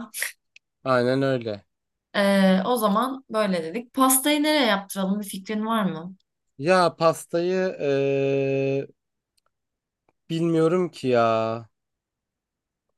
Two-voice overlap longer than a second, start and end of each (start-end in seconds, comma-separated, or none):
none